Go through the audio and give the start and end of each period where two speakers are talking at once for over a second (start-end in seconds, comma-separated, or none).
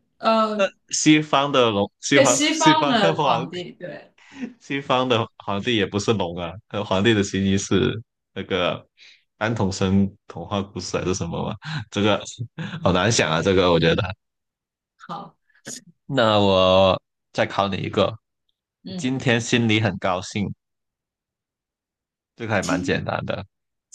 2.1-3.6